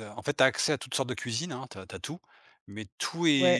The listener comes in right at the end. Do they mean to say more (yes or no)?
yes